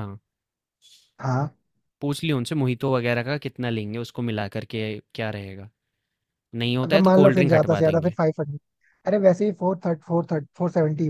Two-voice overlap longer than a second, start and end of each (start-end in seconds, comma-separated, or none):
6.8-8.2